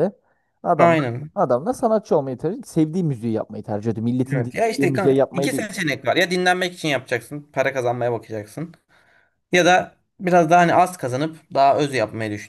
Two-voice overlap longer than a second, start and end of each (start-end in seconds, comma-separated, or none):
4.3-5.7